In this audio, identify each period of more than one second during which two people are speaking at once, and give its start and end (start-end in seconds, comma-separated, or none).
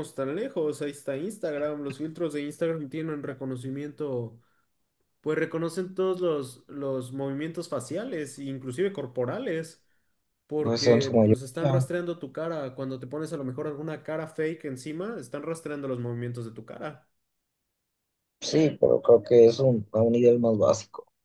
10.6-11.9